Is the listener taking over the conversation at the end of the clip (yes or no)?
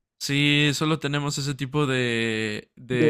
no